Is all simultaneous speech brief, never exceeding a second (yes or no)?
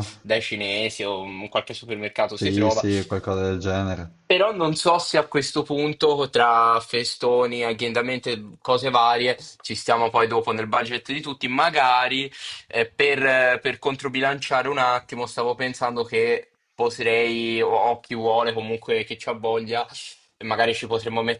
yes